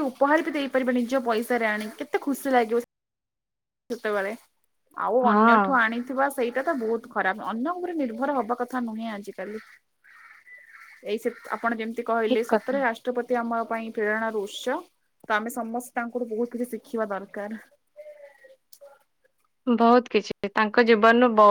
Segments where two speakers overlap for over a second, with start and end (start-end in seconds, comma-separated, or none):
none